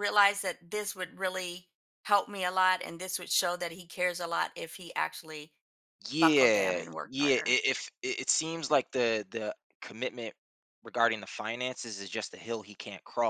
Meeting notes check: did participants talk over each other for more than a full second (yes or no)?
yes